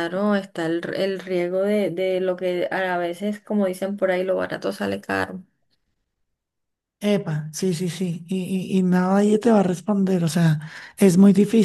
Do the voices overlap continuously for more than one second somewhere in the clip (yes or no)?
no